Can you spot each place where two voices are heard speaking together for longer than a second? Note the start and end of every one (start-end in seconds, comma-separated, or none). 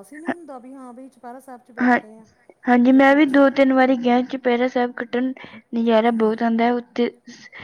none